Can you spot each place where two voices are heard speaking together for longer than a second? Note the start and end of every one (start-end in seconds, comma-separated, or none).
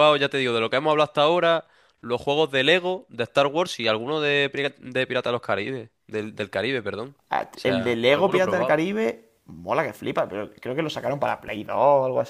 7.5-8.8